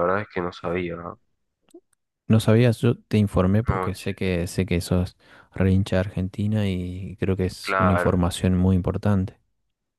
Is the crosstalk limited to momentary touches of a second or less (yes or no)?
yes